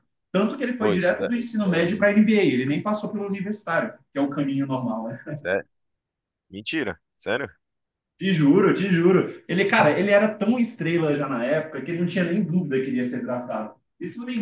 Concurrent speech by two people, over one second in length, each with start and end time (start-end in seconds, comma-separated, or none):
0.8-2.2